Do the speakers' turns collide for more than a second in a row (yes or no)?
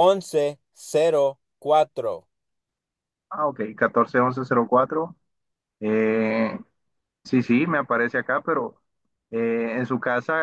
no